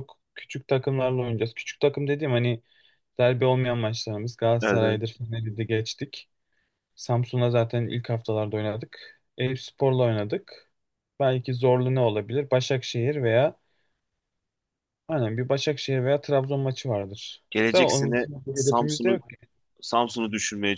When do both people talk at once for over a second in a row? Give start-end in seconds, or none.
17.5-19.2